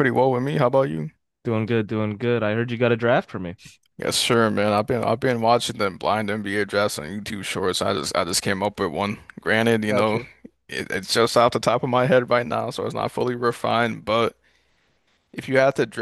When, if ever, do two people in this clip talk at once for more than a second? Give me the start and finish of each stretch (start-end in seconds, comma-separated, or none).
none